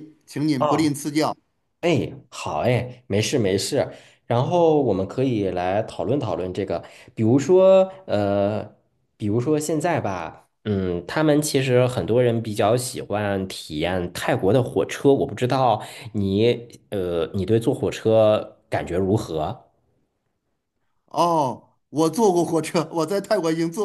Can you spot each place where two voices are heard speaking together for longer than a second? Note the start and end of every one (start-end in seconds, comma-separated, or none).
none